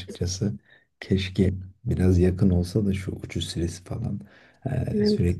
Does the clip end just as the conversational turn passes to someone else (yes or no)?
no